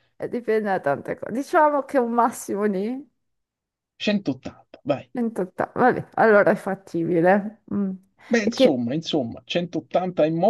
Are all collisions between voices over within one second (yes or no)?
yes